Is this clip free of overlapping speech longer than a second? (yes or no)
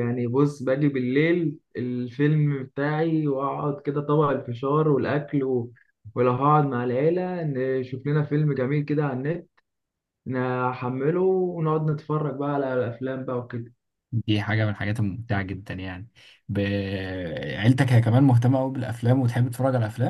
yes